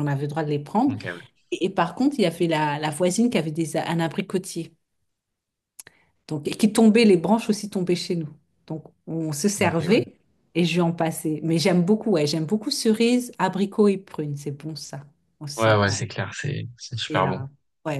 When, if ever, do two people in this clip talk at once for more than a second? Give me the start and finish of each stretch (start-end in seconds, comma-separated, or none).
none